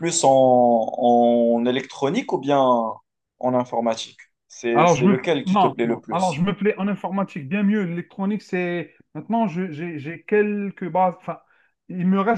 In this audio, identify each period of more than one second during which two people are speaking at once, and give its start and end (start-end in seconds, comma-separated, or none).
4.7-6.5